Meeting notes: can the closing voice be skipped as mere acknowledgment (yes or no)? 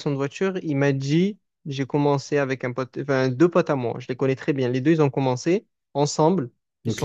yes